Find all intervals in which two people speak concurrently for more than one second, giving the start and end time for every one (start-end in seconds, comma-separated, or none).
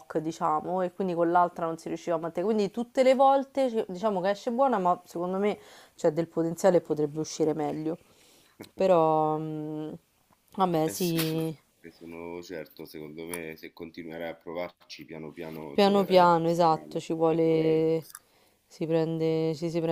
15.7-17.8